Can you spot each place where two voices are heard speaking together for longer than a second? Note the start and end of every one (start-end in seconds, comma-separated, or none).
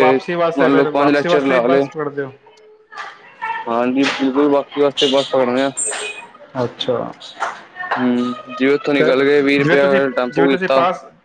0.6-1.9